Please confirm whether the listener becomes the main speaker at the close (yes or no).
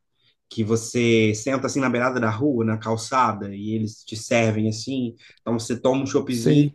no